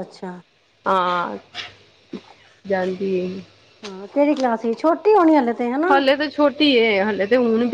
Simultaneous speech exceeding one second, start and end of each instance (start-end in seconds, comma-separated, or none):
none